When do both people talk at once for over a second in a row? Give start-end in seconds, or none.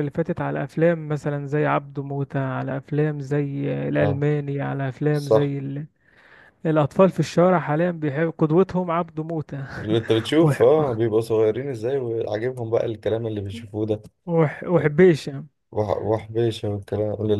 none